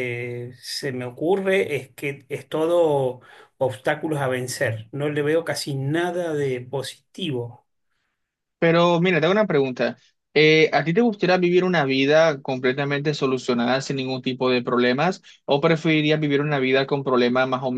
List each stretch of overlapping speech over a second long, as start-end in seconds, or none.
none